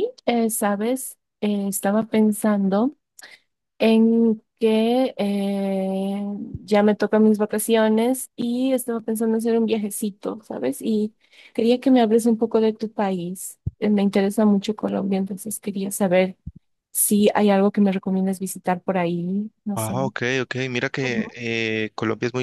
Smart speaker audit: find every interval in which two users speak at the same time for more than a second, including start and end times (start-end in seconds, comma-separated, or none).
none